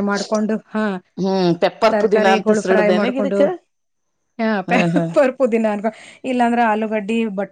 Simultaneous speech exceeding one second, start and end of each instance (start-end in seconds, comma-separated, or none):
1.9-3.4